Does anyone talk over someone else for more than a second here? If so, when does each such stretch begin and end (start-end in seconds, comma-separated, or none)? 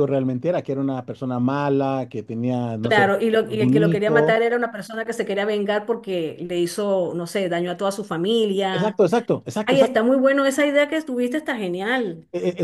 2.8-4.4